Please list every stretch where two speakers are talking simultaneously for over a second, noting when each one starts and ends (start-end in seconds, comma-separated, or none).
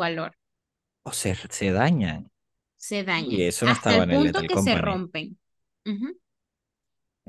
3.1-5.0